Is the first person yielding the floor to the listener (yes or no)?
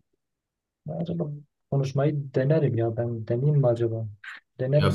yes